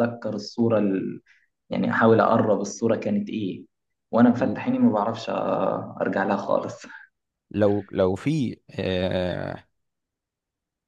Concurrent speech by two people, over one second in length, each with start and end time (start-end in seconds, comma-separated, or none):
none